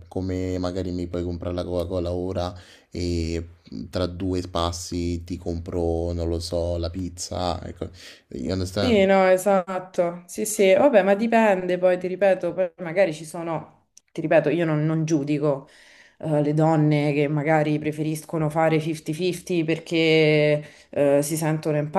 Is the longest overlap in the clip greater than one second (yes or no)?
no